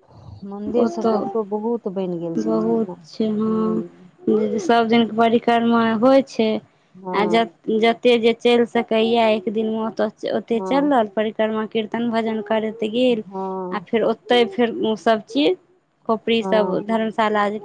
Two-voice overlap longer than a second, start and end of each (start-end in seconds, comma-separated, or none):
2.4-3.8